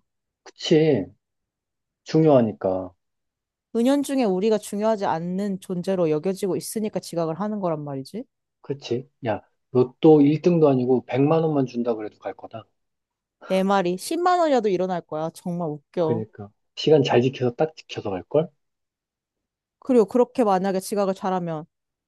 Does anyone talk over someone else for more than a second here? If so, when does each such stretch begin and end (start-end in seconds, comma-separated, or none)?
none